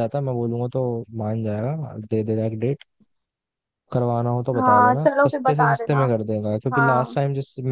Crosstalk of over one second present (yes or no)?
yes